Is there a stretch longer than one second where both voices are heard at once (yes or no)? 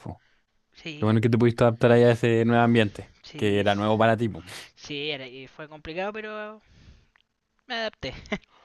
no